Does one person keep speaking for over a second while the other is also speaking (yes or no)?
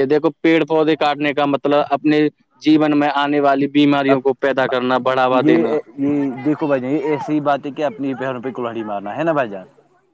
no